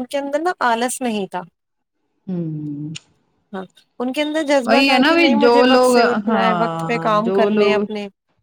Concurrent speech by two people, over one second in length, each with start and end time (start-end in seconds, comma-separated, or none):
4.6-7.8